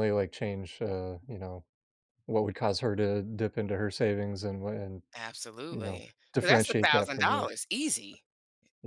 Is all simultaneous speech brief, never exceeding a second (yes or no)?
no